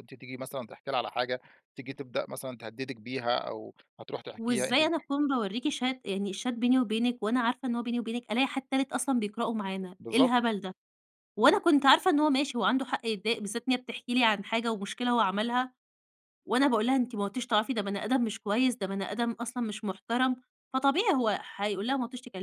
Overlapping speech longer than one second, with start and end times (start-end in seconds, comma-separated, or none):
none